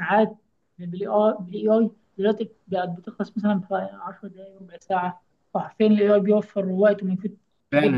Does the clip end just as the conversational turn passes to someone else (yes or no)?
yes